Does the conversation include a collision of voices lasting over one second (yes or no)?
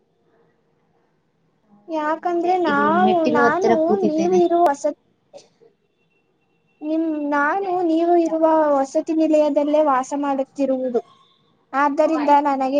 yes